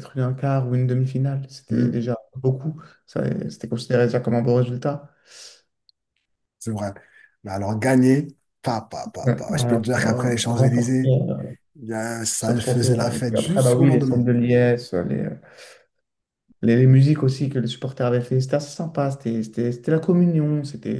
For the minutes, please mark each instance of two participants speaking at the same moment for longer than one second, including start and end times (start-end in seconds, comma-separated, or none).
9.2-11.1, 12.4-14.3